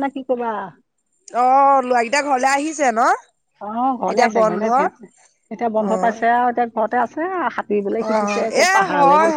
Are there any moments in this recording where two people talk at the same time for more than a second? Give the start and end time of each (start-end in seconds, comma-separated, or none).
none